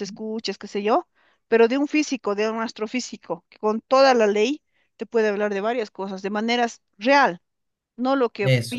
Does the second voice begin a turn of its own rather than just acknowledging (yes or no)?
no